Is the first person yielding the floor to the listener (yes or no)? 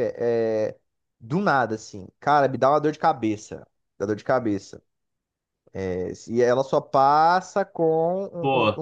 no